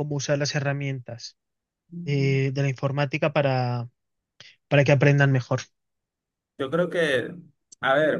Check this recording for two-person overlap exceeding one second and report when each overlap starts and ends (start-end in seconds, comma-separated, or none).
none